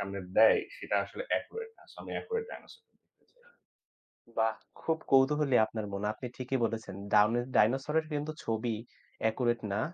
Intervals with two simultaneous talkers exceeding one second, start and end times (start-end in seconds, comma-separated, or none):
none